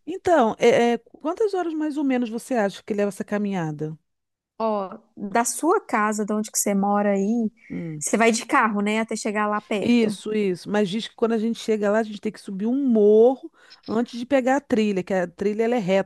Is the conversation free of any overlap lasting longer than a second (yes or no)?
yes